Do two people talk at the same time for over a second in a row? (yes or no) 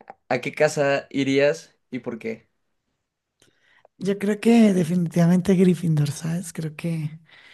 no